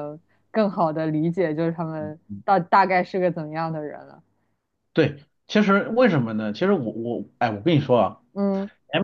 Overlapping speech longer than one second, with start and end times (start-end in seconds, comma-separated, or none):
none